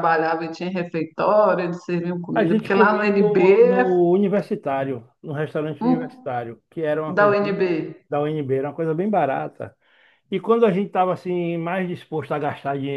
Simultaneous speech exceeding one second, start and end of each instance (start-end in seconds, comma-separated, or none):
2.3-3.9